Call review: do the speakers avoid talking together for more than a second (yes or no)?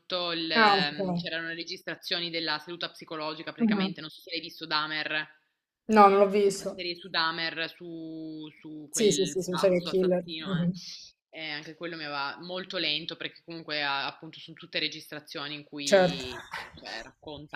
no